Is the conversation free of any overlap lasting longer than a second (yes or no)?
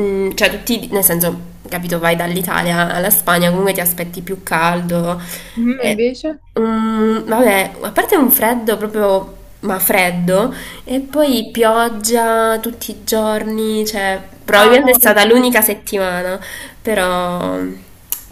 no